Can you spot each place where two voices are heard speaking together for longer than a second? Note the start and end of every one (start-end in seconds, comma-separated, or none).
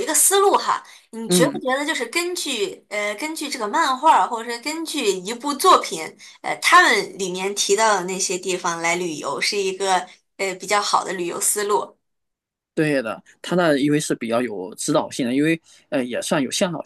none